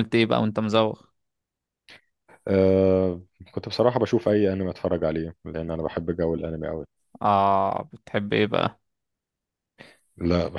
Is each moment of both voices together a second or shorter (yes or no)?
yes